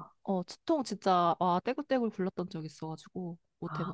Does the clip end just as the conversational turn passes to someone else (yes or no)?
yes